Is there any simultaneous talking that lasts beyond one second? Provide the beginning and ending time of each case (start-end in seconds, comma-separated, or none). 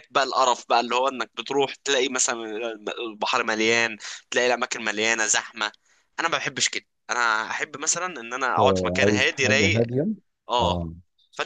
8.6-9.9